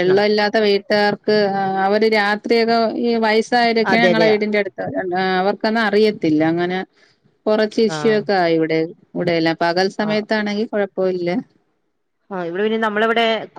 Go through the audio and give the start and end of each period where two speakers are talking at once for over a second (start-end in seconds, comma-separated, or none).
none